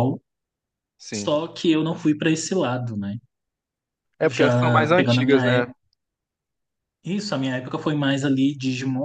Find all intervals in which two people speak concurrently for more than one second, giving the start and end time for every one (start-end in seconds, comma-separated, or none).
4.3-5.7